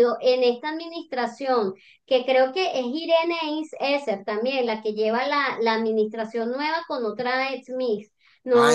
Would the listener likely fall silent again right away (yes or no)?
no